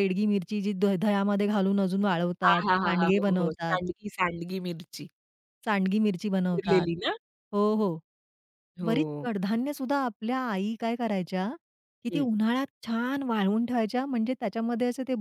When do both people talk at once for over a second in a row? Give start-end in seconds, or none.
2.5-3.8